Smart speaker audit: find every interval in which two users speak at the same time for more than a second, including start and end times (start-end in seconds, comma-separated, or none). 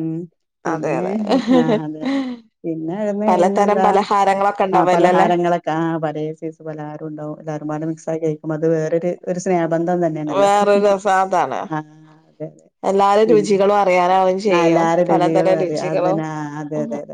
14.6-16.2